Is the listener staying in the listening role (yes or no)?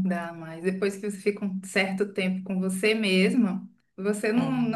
yes